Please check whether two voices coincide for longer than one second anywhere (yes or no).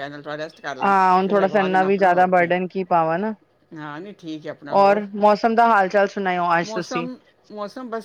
yes